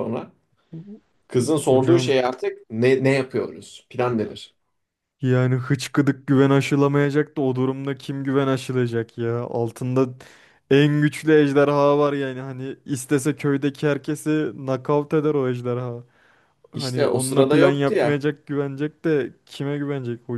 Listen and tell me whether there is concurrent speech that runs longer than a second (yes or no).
yes